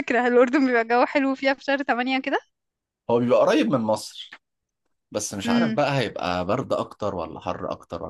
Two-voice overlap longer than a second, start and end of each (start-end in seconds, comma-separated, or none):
none